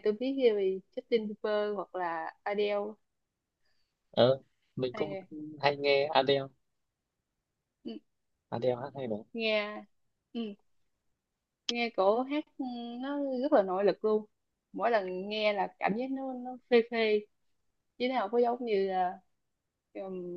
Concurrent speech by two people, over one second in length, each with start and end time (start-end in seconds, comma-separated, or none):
none